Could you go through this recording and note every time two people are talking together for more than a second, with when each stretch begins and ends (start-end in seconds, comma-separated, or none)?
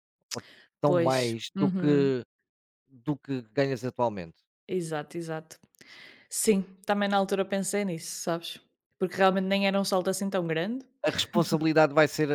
0.8-2.1